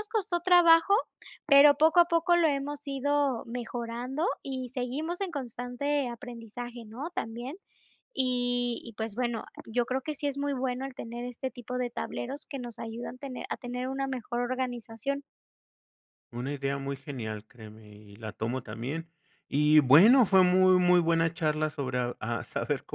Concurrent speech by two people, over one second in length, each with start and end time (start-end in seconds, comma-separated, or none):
none